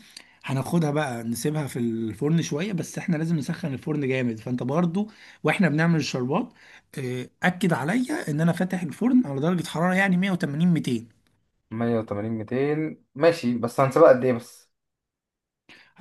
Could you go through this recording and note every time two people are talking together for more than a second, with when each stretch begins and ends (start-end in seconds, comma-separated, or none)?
none